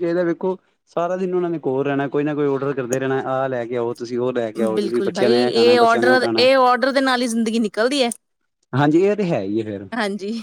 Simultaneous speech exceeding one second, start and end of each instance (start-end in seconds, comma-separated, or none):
4.7-6.5